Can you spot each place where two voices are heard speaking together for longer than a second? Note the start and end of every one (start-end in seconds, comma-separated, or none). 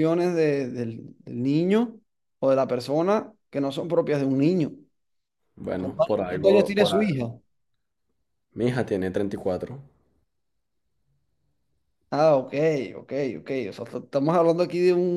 5.8-7.1